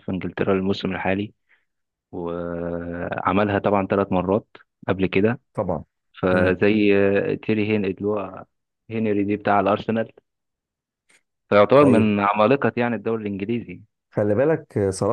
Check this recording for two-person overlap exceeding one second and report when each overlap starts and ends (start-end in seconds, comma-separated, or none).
none